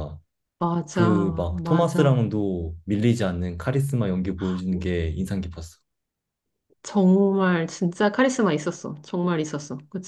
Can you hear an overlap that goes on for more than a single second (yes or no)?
yes